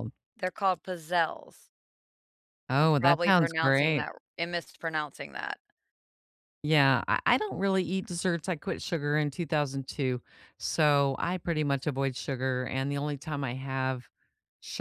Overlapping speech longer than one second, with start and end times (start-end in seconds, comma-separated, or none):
2.8-4.1